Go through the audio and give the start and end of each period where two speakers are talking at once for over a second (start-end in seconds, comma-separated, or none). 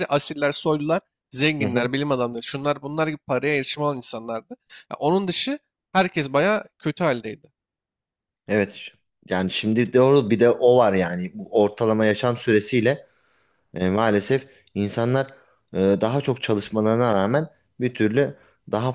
none